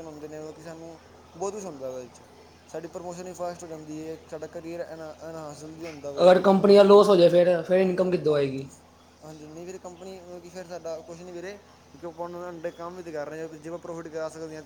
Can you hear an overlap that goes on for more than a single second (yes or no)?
no